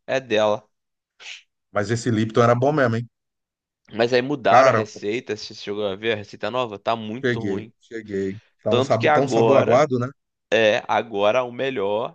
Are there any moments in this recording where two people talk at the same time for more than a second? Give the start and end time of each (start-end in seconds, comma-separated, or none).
8.7-9.9